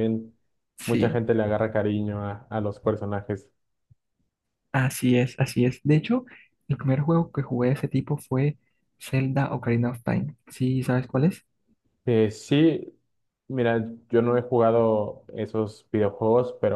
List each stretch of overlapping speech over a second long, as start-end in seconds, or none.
none